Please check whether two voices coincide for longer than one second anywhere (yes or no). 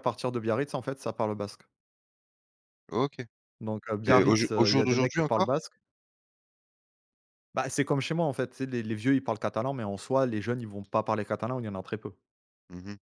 yes